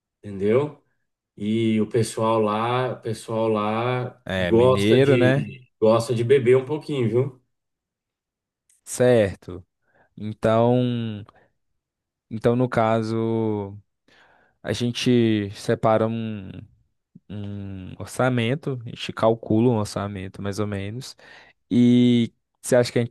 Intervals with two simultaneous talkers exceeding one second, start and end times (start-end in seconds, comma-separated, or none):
4.2-5.5